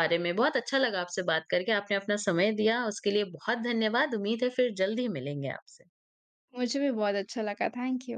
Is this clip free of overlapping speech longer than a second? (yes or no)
yes